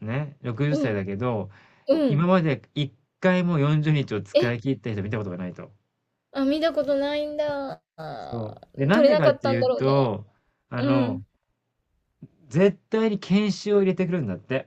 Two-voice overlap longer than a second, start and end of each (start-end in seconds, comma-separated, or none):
8.3-10.1